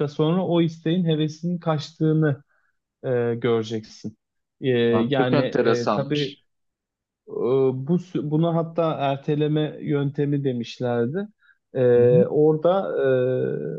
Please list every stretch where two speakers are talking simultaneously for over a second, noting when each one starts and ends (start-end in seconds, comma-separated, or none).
5.1-6.4